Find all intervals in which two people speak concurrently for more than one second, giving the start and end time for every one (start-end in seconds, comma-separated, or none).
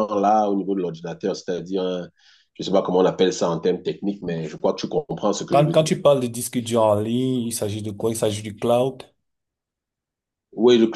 none